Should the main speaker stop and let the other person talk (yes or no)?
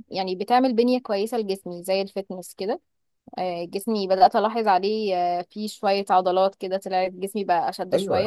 yes